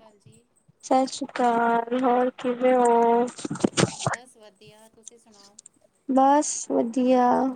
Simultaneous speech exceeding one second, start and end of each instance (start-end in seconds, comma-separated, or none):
none